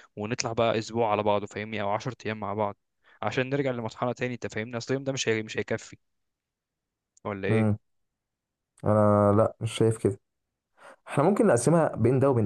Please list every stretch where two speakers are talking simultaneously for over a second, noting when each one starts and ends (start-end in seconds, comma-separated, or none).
none